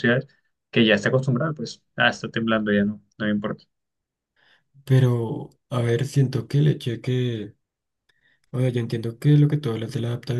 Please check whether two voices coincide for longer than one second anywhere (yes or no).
no